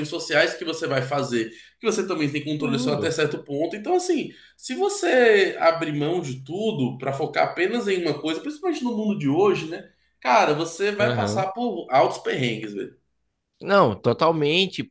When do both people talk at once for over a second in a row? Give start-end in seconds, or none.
none